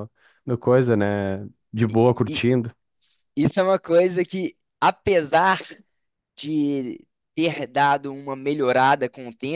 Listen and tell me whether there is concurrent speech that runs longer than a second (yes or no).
no